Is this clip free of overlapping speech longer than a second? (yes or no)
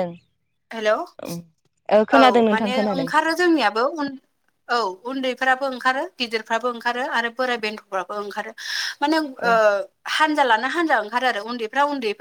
no